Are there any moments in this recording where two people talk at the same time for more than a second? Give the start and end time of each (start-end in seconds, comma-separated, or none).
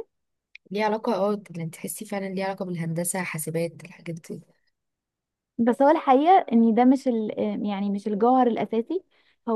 none